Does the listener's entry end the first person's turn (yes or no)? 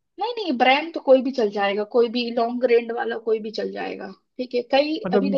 no